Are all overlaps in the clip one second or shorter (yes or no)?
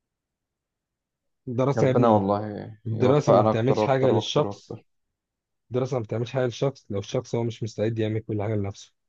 no